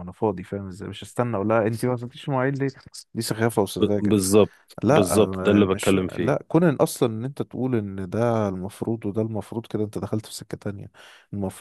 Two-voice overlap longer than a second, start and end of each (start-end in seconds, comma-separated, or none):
4.8-6.4